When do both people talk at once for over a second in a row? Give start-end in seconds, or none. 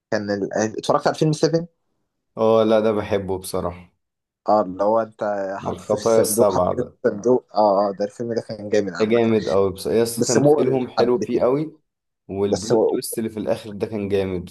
5.6-7.0, 10.2-11.4